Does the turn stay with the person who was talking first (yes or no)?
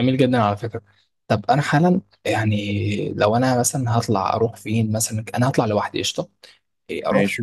yes